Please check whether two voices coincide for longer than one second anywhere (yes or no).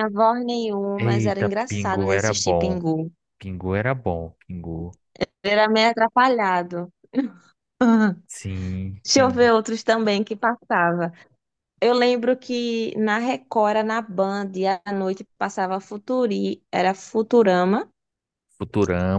yes